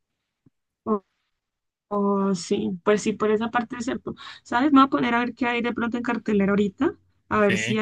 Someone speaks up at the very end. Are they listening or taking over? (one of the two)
listening